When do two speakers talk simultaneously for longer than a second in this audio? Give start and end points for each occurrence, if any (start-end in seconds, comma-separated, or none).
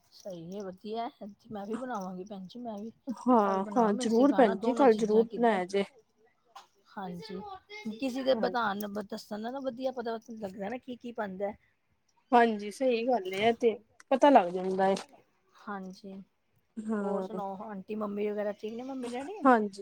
3.4-5.6